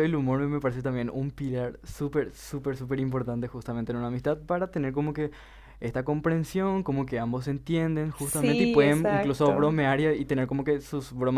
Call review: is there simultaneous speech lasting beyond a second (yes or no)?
yes